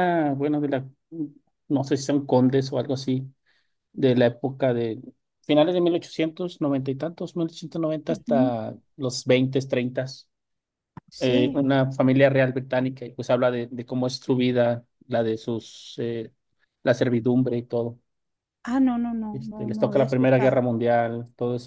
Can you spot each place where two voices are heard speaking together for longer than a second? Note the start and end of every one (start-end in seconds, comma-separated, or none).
19.3-20.6